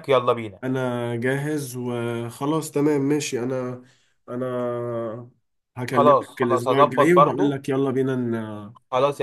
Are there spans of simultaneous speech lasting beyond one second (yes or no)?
yes